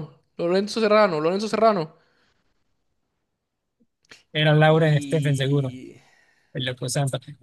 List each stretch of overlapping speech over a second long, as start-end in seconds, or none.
4.5-5.7